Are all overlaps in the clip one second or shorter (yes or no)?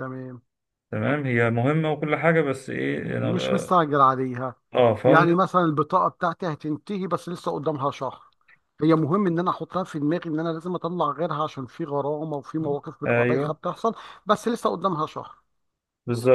yes